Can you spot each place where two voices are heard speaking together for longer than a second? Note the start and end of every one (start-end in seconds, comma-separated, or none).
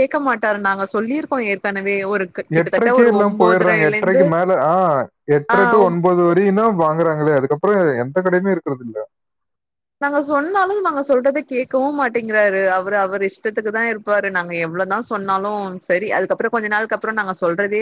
2.6-4.2